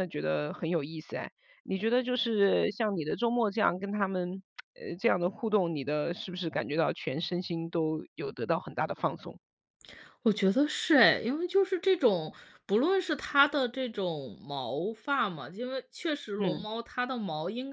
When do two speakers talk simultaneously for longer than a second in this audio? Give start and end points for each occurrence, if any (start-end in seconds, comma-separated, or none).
none